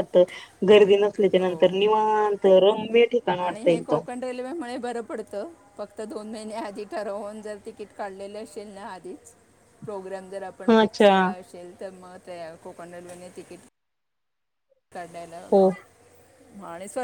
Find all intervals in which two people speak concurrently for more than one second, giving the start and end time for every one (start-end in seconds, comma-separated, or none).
none